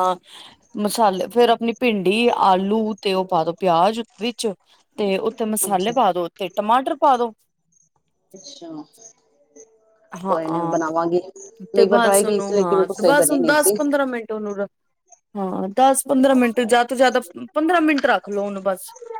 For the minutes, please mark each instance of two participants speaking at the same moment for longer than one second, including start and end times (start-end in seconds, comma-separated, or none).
11.7-13.7